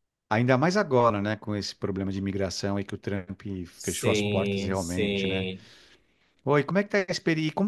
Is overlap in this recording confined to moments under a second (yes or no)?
no